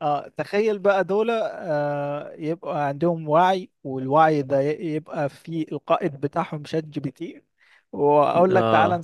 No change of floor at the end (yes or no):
yes